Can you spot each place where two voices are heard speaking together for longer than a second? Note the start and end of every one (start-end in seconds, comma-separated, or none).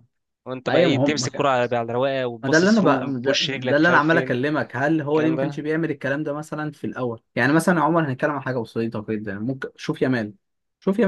2.4-4.4